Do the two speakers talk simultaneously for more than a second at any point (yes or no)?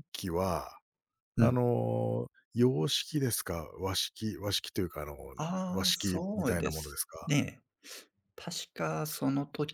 yes